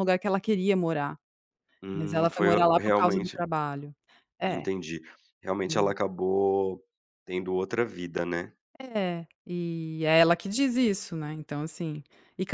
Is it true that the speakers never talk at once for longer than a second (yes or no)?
no